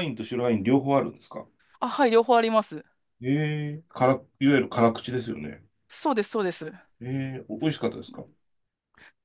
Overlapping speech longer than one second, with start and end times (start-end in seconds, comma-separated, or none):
none